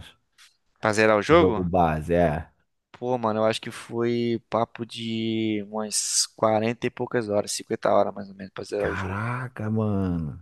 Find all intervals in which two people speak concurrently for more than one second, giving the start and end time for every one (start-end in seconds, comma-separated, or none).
none